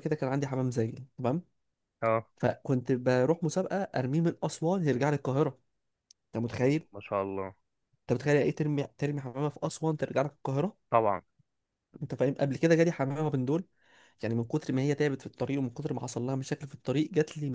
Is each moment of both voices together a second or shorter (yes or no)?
yes